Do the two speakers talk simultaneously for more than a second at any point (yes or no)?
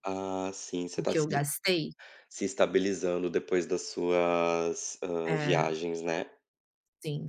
no